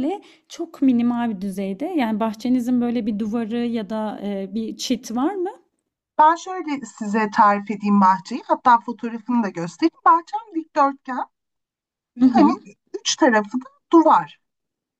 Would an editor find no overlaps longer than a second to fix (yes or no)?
yes